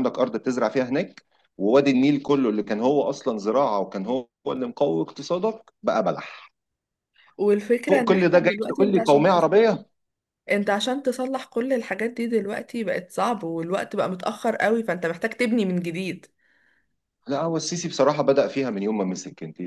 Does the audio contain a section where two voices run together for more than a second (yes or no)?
yes